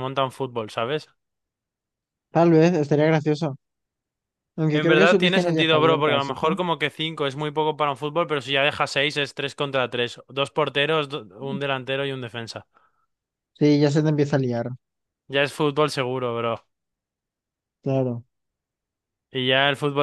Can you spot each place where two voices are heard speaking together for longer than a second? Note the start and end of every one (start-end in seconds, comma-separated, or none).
4.7-6.5